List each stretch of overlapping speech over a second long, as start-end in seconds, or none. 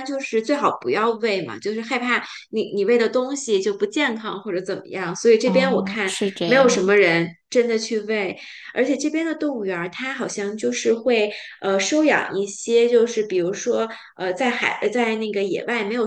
5.4-7.0